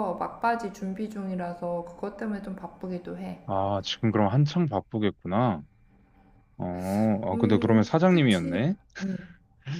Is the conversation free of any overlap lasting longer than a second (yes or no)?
no